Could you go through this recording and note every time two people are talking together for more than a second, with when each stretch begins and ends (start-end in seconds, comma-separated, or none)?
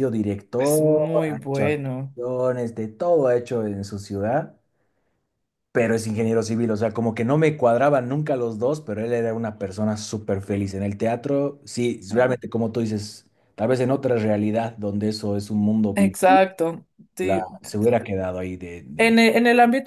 0.6-2.1